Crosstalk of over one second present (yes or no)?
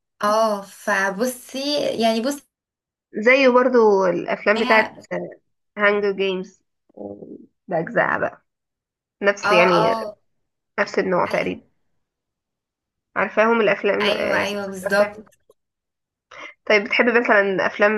yes